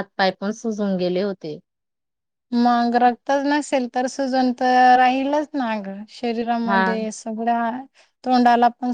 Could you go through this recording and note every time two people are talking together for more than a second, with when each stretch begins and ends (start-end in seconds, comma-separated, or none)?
none